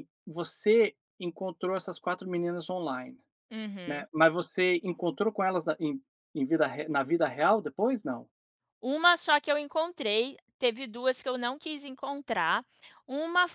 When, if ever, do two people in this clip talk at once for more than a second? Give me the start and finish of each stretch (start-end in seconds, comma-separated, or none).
none